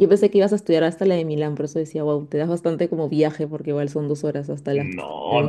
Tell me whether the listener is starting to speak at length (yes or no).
yes